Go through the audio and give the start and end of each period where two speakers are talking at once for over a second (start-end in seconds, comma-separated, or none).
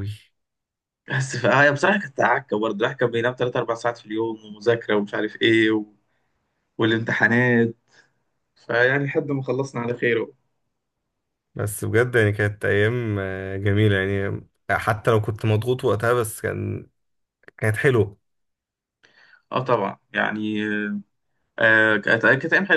none